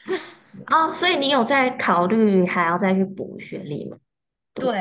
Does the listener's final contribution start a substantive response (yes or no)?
yes